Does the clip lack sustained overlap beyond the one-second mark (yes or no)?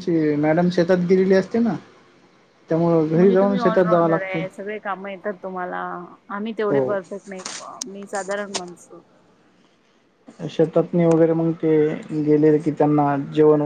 no